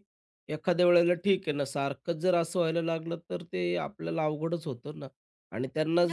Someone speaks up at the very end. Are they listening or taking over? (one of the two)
listening